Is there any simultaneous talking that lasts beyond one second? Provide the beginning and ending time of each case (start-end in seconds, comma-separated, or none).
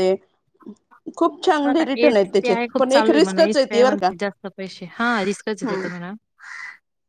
1.6-4.1